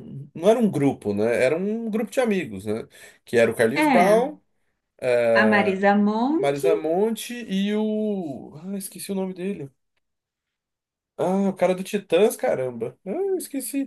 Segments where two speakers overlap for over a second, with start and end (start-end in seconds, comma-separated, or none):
none